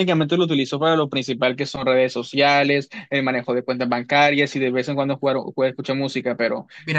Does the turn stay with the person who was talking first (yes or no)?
no